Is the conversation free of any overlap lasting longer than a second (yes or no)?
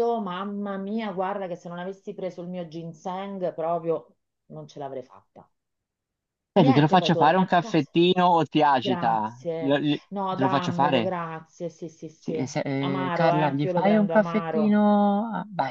no